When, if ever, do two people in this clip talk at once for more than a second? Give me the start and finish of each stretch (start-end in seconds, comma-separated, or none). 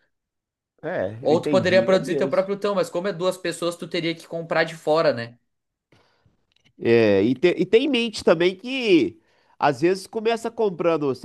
1.2-2.5